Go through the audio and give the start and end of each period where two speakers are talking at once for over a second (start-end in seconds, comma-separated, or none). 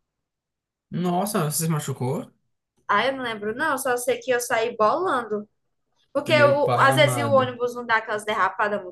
6.3-7.5